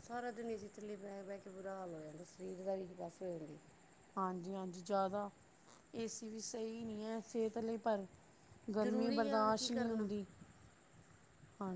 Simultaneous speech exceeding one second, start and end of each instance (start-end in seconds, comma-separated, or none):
8.8-10.1